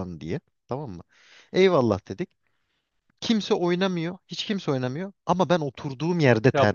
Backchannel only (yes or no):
no